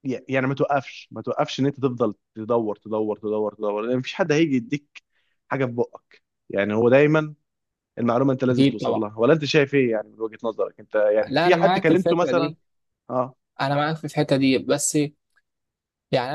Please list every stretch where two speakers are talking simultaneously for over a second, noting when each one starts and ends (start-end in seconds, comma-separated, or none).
11.3-12.5